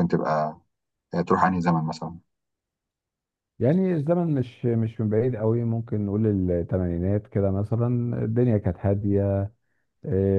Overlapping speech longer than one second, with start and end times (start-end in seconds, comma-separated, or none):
none